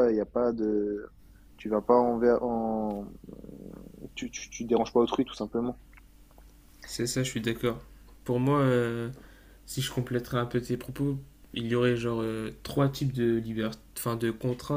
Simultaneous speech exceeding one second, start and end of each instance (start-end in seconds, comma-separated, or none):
none